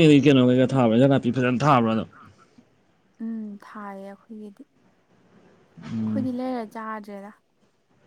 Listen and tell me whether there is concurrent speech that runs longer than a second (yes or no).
no